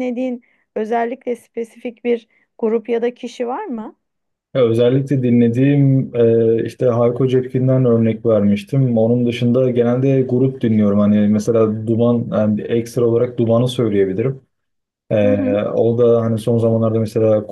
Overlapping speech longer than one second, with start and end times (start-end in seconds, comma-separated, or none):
none